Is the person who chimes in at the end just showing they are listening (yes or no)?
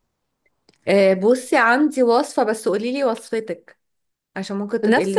no